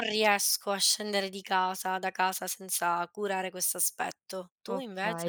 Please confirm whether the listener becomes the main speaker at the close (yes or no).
yes